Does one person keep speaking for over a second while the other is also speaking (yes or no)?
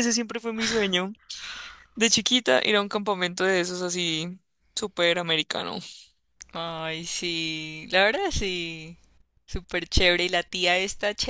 no